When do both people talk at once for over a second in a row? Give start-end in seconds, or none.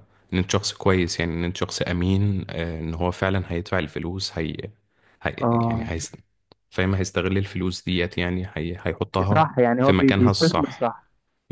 9.3-10.9